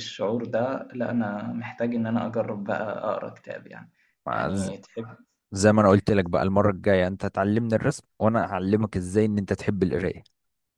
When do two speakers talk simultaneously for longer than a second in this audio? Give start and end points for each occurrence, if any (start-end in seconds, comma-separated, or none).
none